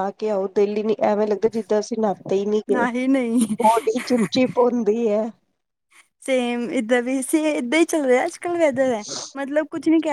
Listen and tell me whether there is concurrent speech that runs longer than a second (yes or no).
no